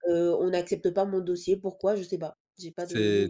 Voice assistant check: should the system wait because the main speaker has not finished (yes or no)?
no